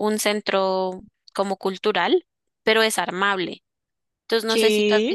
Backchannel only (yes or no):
yes